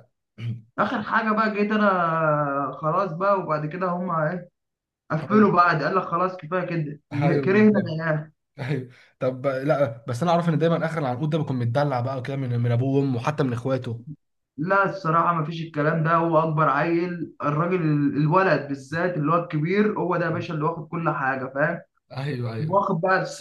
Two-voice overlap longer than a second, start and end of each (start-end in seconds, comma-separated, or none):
none